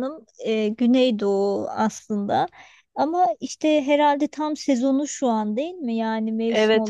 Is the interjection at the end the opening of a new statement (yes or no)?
yes